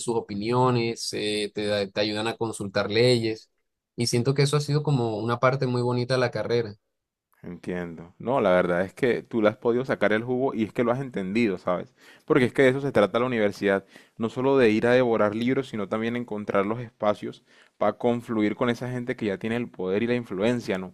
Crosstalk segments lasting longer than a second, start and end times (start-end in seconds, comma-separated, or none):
none